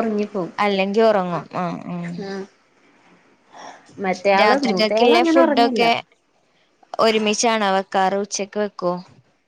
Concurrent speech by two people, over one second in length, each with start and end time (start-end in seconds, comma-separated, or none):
4.4-5.8